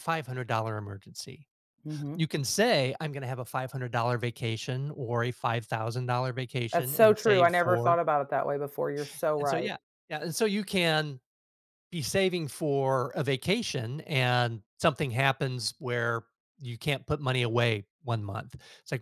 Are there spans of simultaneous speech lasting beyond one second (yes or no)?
yes